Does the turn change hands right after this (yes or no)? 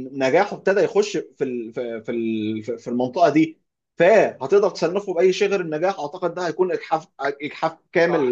no